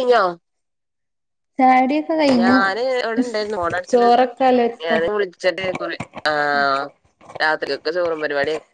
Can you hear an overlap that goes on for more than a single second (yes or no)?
no